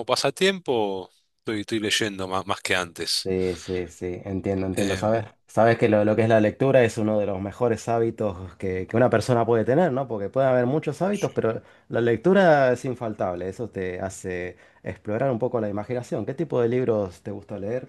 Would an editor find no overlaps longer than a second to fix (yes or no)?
yes